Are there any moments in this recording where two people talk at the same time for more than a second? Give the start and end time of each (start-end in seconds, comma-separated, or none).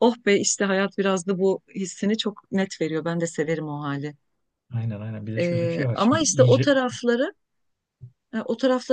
5.4-6.7